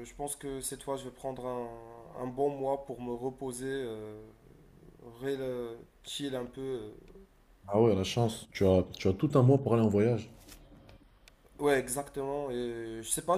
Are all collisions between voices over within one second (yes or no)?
yes